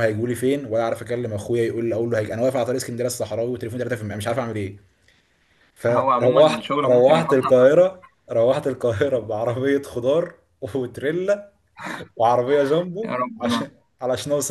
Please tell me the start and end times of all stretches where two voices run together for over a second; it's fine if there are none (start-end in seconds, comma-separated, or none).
5.9-7.5